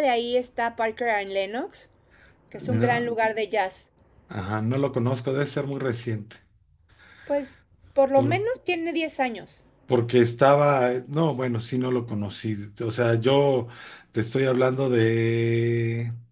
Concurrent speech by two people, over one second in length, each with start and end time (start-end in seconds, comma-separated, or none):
none